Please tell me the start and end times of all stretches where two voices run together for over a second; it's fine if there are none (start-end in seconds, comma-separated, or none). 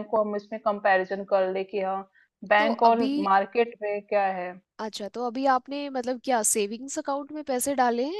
none